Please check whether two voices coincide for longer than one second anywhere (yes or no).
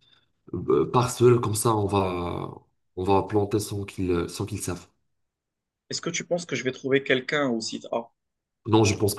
no